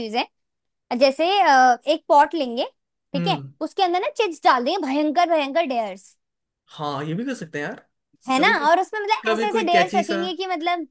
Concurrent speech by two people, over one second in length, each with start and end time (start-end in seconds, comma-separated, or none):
8.3-10.2